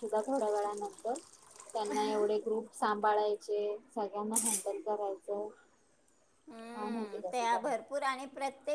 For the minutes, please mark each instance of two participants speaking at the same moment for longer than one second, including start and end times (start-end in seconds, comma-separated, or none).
6.7-8.0